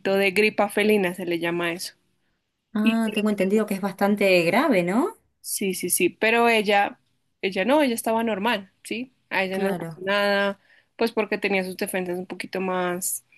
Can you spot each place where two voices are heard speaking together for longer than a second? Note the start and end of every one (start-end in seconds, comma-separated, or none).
none